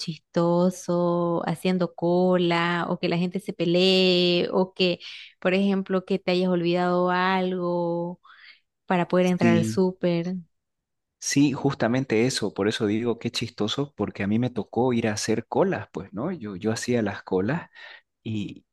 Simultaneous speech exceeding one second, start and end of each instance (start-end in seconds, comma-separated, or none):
none